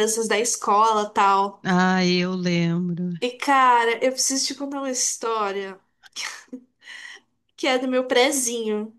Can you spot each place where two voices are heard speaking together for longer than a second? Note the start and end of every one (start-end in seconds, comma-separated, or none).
none